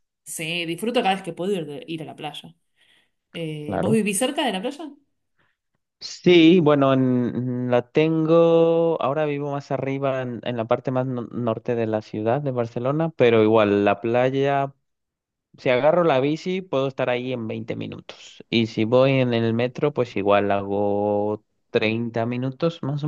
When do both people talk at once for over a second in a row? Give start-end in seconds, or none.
none